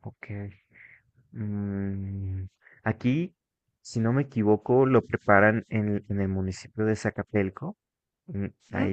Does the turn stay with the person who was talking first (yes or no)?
yes